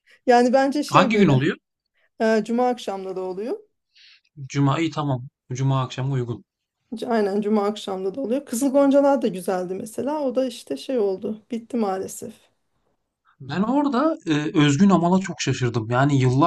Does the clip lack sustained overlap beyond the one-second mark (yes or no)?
yes